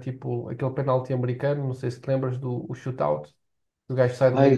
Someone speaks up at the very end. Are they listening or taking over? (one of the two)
taking over